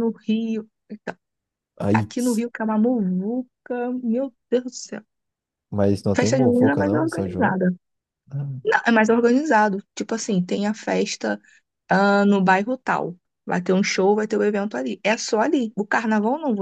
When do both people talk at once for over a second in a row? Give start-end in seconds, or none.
6.2-7.6